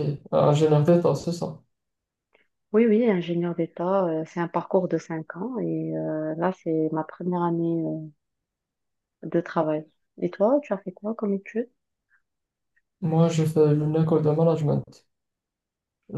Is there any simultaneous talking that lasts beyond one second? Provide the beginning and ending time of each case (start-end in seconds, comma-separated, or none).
none